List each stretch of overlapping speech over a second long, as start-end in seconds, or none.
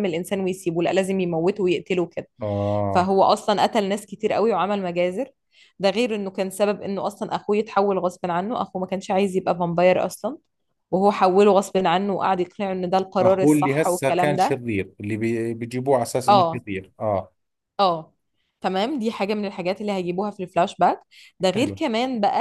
13.2-14.6